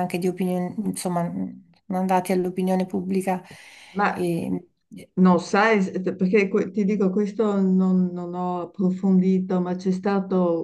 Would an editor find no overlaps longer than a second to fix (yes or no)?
yes